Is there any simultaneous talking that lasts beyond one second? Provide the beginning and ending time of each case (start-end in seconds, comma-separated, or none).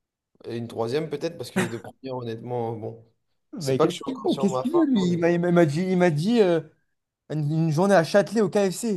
3.6-5.3